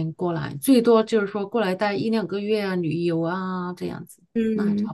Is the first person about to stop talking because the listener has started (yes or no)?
yes